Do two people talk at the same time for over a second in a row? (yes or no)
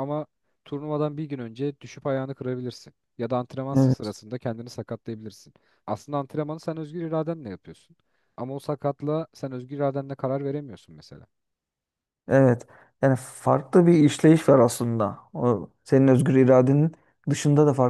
no